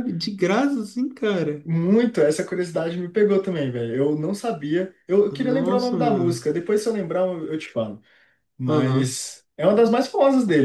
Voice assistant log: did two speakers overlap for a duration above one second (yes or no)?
yes